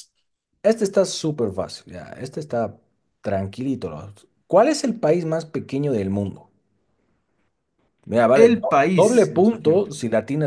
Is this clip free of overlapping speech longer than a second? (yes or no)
no